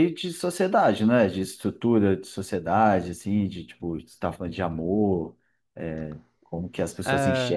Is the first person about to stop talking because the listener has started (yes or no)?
yes